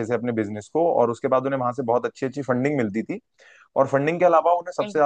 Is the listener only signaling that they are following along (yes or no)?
yes